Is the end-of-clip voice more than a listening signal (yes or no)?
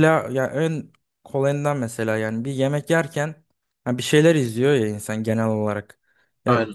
no